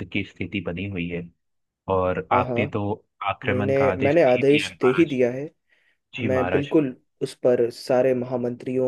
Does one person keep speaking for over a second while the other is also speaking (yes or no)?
yes